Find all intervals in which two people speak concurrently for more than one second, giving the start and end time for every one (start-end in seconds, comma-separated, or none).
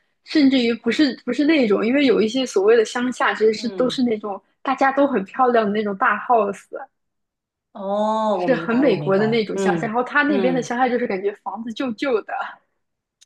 8.3-10.7